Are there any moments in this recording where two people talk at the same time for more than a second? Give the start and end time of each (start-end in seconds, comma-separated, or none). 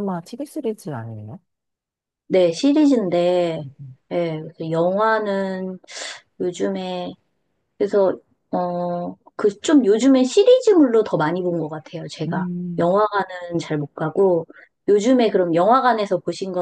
none